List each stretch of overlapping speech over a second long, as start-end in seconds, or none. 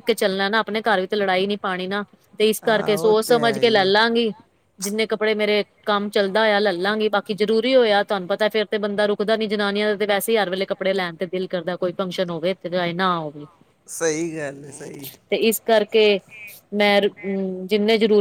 2.7-4.1